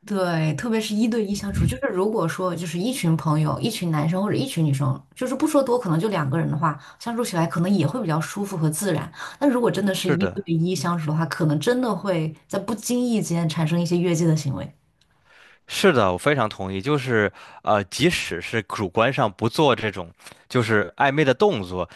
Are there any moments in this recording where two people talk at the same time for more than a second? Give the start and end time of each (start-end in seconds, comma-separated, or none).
none